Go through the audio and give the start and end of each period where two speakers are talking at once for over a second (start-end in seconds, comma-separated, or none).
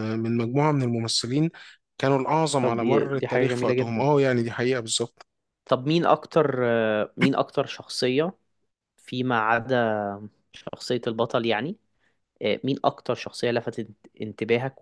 2.6-4.0